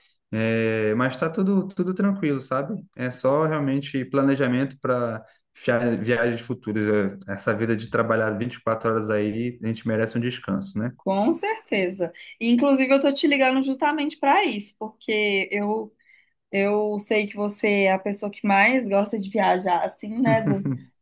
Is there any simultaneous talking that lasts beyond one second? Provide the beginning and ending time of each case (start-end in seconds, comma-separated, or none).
none